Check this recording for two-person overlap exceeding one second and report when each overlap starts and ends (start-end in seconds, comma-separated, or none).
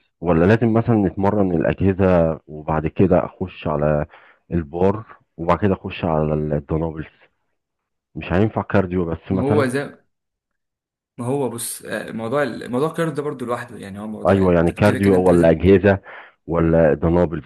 14.3-15.6